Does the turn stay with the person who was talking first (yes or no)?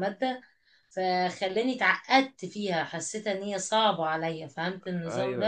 no